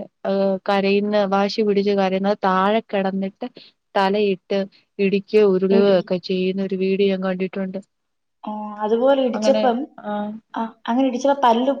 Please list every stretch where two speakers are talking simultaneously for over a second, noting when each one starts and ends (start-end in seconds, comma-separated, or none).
none